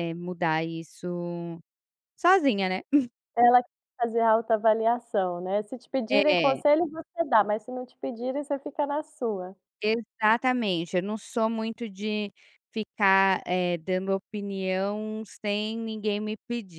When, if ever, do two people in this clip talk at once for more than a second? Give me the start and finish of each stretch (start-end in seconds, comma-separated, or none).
none